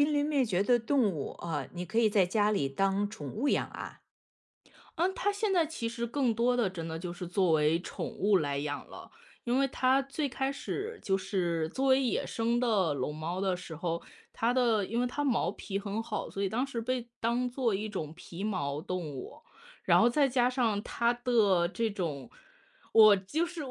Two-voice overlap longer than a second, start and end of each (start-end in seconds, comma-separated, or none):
none